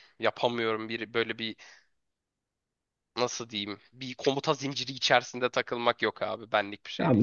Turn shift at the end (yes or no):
yes